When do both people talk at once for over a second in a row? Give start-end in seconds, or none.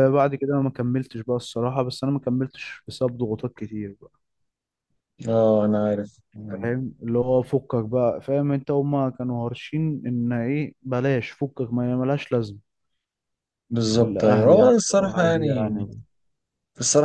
14.0-15.9